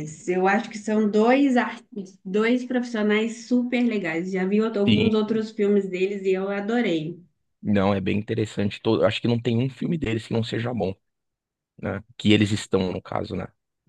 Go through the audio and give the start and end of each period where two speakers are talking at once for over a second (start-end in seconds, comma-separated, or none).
none